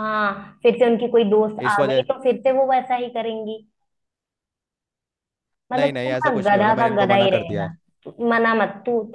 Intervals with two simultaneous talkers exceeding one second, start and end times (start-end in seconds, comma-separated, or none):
5.7-7.7